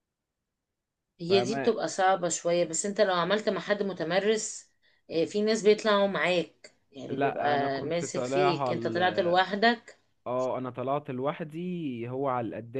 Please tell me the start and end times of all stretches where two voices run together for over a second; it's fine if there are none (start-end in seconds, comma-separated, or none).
7.2-8.7